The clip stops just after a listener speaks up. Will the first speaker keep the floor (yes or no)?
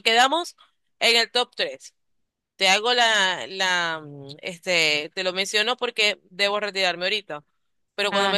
yes